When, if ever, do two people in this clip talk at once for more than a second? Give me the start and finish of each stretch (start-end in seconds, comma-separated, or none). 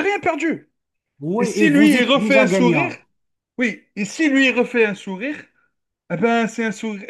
1.4-2.9